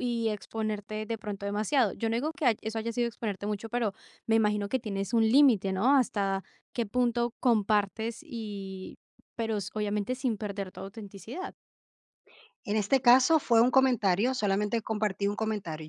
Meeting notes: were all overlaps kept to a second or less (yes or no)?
yes